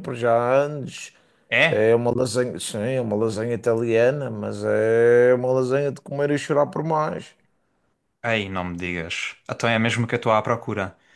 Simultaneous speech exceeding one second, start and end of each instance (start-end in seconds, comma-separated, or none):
none